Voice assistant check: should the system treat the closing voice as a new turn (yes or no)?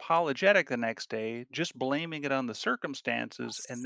no